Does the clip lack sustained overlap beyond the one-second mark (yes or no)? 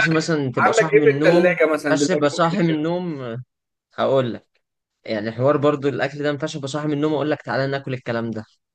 no